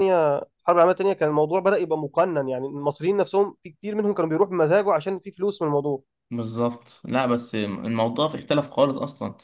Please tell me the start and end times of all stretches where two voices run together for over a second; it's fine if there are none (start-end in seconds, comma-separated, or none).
none